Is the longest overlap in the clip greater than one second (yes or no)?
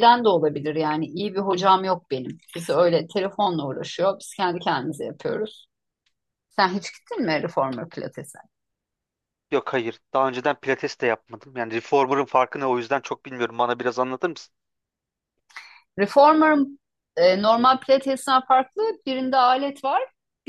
no